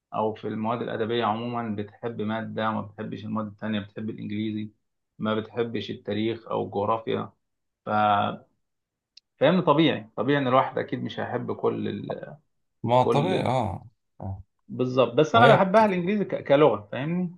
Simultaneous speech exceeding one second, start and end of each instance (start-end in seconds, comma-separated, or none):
none